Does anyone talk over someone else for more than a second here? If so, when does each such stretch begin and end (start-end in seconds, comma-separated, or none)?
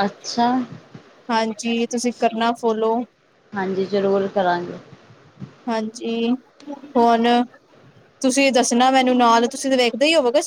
none